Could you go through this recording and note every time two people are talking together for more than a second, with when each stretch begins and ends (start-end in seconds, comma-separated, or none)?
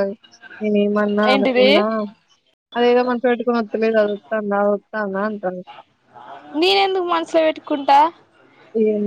none